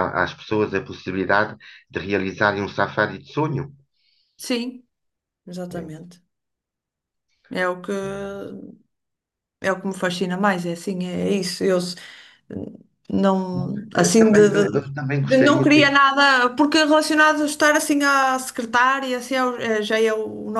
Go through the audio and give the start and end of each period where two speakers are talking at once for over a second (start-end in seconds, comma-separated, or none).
13.5-16.0